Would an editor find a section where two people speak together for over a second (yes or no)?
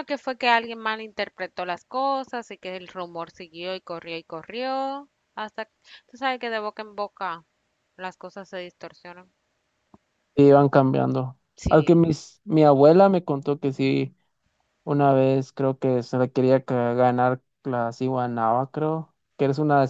no